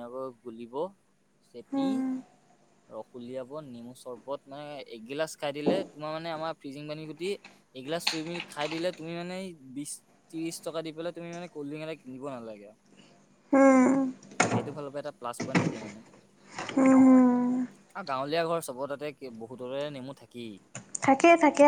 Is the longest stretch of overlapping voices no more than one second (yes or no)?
yes